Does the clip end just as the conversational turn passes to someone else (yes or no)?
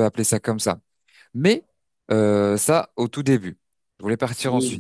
no